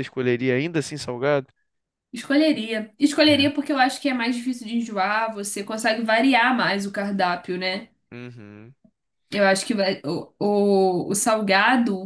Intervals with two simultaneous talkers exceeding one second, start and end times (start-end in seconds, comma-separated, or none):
none